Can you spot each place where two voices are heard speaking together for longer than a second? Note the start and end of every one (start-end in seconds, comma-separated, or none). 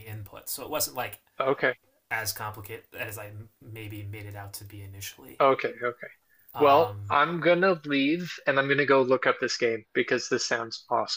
none